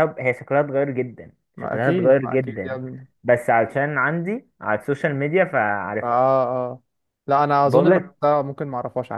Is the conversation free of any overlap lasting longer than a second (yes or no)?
no